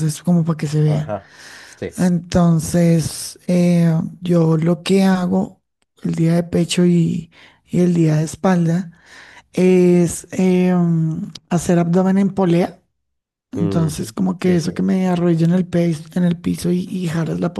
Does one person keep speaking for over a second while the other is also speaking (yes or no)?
yes